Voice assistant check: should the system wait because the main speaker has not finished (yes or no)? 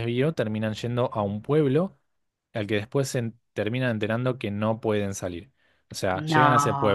yes